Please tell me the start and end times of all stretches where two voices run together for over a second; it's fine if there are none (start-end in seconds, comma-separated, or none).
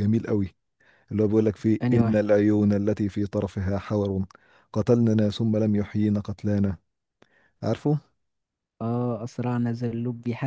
none